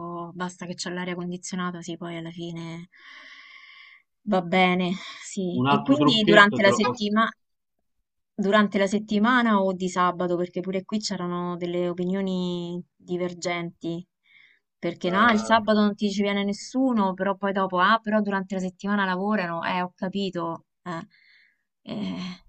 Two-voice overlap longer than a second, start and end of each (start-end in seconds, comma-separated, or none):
5.5-7.1